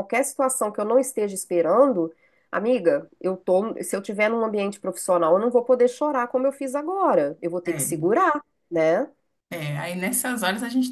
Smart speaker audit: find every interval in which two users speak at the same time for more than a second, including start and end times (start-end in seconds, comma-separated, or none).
none